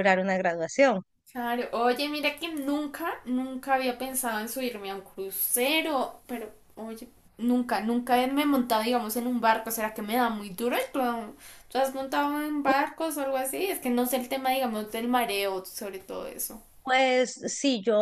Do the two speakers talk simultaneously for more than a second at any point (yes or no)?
no